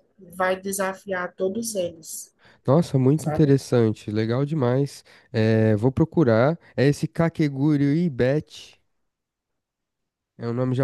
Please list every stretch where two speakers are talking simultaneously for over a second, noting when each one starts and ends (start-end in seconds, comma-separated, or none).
none